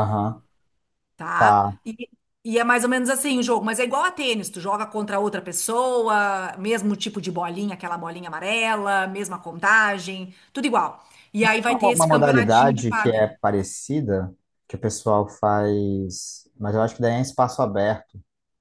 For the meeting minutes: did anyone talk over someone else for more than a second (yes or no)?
yes